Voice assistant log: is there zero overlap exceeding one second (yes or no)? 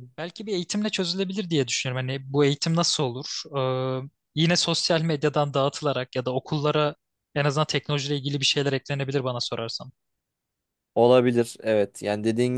yes